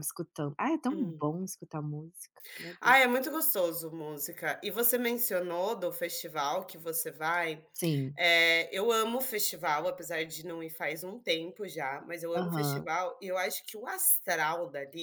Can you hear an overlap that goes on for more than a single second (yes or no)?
no